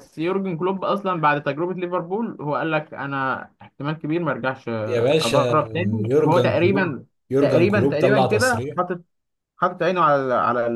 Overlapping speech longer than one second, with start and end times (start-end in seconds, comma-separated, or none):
6.1-8.8